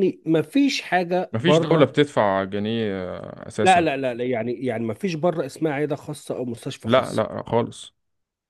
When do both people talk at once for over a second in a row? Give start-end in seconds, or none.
none